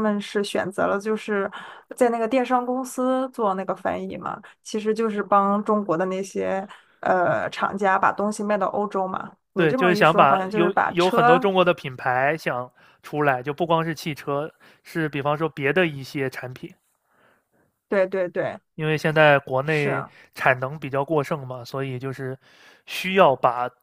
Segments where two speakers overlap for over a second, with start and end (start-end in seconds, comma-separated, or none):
9.6-11.5